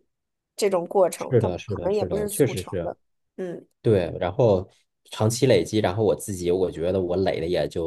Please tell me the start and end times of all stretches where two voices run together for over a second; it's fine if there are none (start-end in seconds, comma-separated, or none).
1.2-2.9